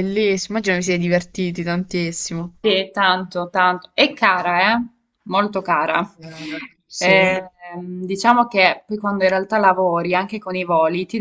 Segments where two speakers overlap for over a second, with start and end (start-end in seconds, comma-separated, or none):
none